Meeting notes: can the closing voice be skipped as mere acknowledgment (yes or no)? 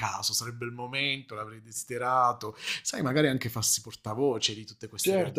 no